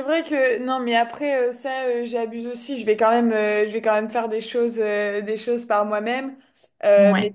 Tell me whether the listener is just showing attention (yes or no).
yes